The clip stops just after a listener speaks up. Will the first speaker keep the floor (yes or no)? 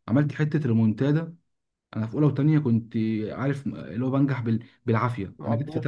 yes